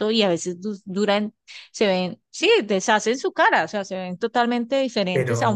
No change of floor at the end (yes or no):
yes